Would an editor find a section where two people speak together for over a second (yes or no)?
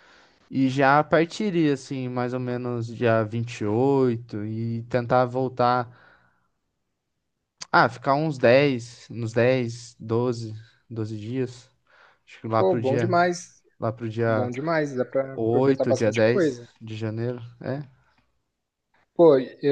yes